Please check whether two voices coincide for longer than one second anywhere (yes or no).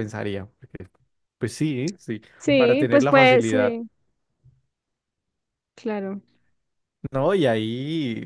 yes